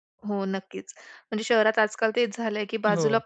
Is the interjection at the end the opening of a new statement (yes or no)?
no